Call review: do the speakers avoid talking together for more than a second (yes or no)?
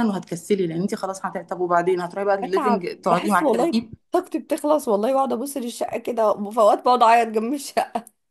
no